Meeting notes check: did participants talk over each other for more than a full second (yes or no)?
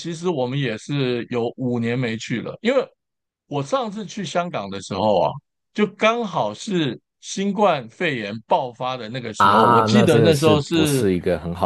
yes